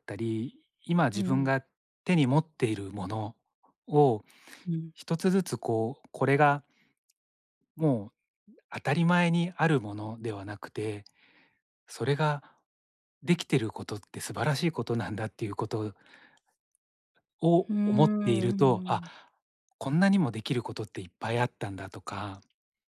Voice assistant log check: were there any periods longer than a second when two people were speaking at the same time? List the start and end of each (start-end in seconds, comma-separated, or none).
17.7-19.0